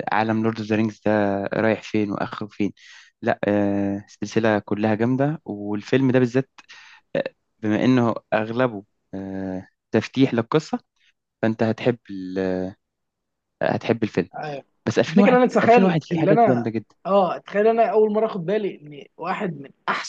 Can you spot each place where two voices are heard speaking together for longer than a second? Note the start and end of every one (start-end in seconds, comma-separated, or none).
15.1-16.7